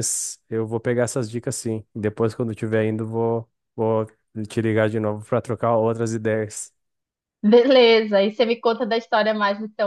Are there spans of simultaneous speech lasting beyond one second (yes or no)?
no